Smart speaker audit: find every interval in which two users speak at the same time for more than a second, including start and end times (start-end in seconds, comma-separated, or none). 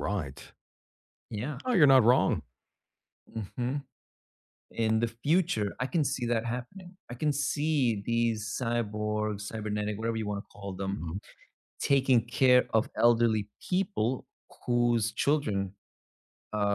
none